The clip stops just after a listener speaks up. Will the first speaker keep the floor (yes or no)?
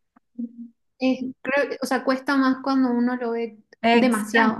no